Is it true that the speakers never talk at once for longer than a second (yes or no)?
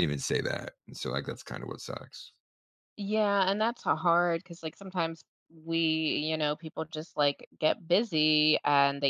yes